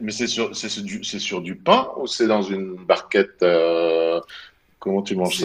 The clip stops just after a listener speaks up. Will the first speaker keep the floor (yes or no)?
no